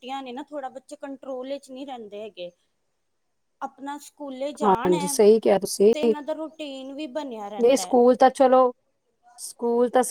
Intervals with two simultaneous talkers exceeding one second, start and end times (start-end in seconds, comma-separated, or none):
none